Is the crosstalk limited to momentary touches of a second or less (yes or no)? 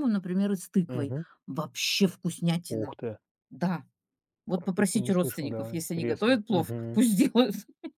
no